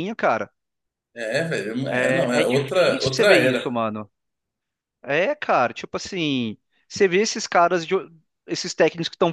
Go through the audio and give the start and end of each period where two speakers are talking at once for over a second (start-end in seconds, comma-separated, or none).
1.9-3.6